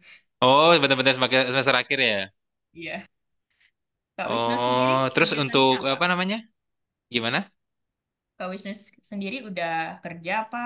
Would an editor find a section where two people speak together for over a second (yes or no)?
yes